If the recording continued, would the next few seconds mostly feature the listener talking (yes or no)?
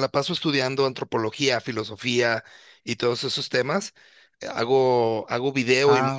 no